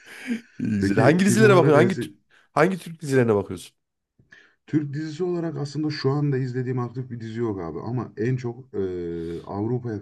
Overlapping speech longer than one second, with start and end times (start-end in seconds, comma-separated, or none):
0.8-2.1